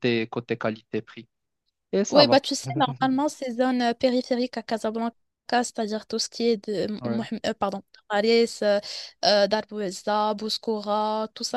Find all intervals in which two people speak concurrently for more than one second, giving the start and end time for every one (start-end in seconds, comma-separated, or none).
none